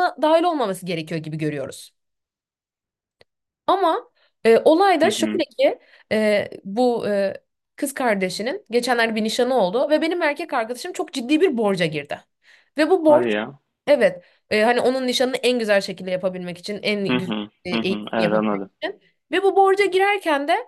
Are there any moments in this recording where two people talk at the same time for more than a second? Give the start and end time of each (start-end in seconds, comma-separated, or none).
17.1-18.7